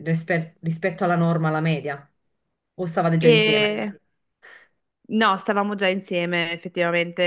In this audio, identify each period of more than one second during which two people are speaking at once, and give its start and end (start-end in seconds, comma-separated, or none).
none